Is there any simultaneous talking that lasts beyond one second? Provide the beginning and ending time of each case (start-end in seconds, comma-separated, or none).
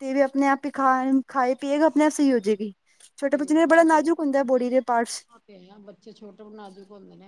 none